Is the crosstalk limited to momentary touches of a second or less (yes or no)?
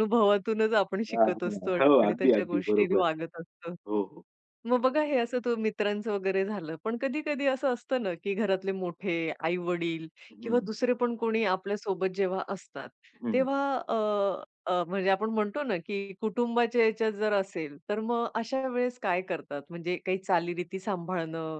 no